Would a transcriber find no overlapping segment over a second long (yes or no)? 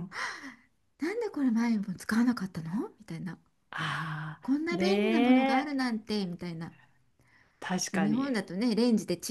no